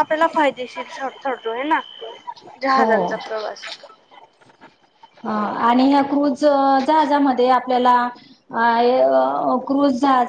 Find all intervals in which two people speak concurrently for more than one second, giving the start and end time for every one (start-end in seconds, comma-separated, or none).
none